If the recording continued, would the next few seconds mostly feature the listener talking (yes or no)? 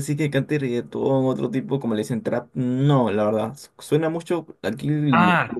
yes